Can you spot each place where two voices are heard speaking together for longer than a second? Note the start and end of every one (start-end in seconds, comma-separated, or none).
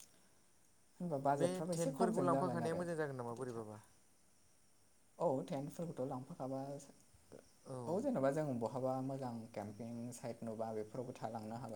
1.4-3.8